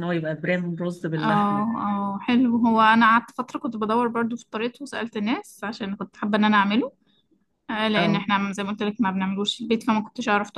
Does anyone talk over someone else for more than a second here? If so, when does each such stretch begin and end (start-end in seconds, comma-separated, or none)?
none